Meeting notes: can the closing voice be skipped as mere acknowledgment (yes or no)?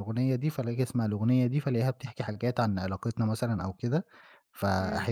yes